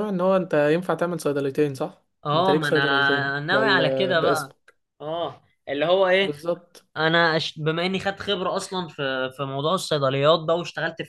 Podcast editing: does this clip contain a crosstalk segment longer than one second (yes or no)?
yes